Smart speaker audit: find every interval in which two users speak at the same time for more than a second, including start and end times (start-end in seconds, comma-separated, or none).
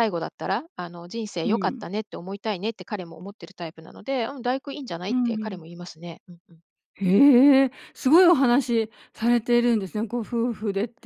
none